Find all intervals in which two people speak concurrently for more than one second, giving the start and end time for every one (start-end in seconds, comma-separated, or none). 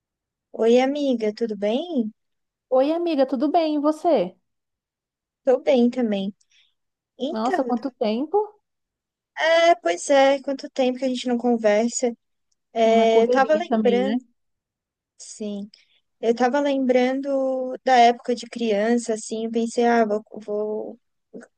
12.8-14.2